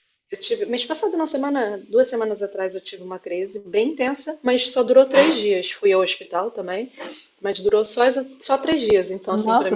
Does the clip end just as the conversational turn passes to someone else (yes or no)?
yes